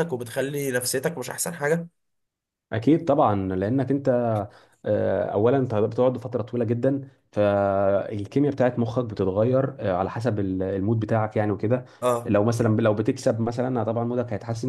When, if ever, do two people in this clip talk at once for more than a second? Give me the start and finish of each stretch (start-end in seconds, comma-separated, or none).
none